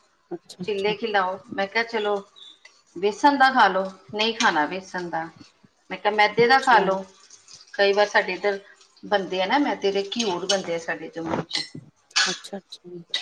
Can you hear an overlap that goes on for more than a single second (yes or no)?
no